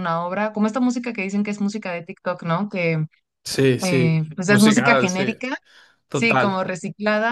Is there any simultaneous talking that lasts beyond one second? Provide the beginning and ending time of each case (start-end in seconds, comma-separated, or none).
3.8-5.3